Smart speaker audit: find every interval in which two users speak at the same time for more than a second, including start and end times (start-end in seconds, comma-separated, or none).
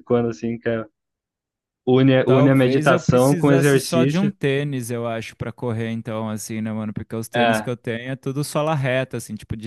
2.2-4.3